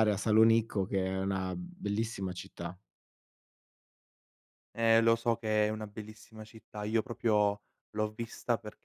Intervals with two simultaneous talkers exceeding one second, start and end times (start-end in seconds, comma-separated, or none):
none